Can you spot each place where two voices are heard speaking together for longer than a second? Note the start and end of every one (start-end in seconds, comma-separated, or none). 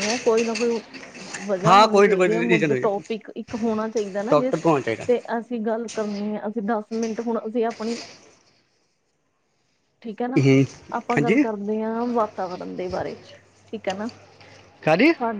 1.7-3.0